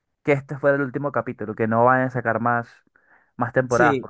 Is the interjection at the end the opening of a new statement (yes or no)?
yes